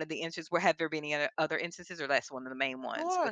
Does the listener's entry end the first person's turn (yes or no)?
yes